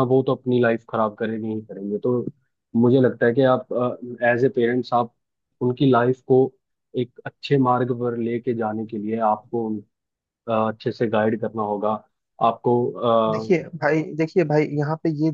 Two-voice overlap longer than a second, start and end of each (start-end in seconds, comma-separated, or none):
none